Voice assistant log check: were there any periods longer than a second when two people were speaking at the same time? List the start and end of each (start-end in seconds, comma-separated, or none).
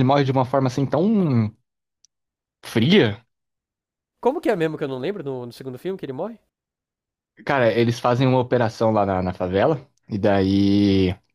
none